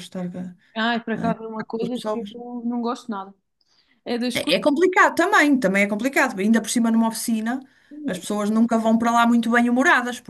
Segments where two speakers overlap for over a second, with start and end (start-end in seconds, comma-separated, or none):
1.2-2.5